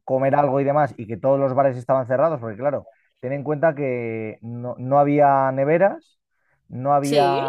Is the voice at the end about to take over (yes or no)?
no